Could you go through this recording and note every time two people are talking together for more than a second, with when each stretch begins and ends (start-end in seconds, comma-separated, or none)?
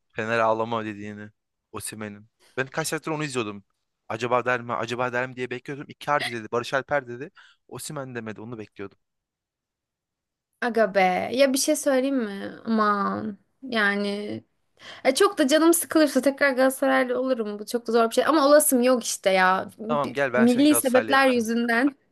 19.9-21.5